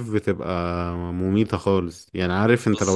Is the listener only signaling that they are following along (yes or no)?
yes